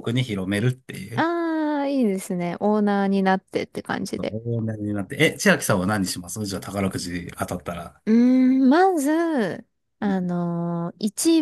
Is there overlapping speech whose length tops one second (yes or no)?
no